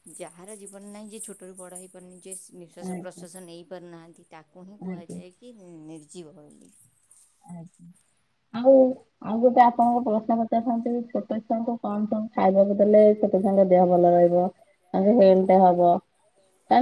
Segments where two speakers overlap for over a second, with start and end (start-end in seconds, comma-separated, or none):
none